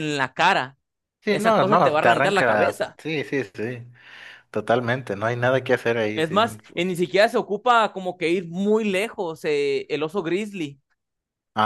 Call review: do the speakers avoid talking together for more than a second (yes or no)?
no